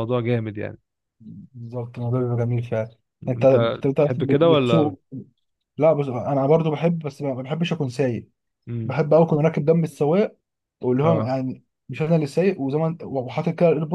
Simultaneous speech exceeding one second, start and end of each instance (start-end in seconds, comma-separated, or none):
3.4-4.9